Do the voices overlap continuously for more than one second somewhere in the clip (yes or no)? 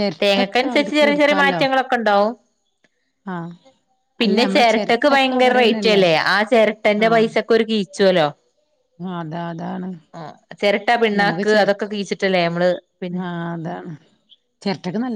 yes